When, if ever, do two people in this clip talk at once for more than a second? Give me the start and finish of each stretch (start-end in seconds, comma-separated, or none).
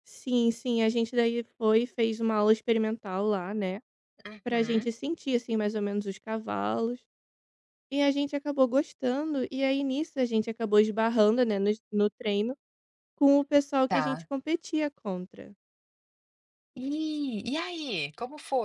none